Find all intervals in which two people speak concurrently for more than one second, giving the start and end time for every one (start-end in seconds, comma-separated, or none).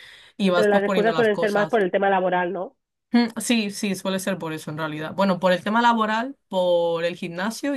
0.5-1.8